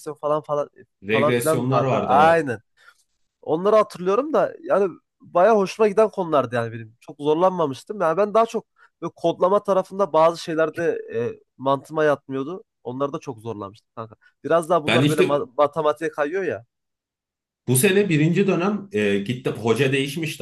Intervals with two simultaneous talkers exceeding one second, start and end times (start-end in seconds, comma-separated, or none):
1.1-2.5